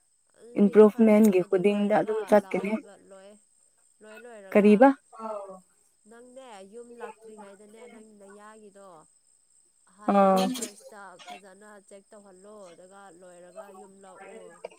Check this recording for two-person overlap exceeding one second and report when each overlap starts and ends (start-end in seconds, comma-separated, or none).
0.6-2.7